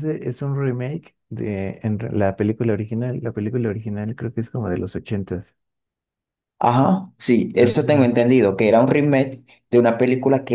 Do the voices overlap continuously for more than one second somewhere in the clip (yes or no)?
no